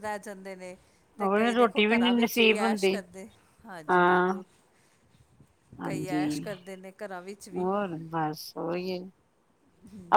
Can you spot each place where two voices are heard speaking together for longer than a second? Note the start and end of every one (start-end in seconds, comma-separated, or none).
1.2-2.9